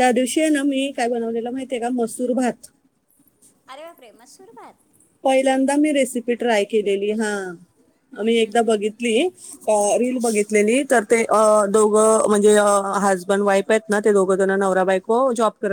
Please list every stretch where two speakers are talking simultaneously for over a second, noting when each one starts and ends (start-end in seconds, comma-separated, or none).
none